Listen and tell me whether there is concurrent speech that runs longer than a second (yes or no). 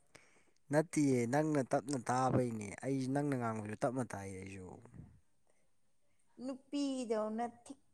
no